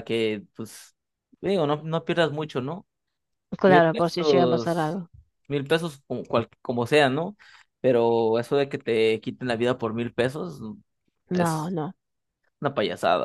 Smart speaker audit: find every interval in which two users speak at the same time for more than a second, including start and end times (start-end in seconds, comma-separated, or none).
3.6-5.0